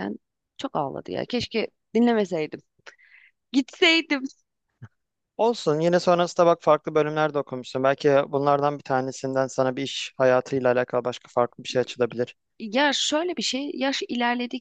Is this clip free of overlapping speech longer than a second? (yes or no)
yes